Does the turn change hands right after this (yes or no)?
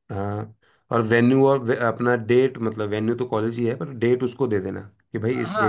yes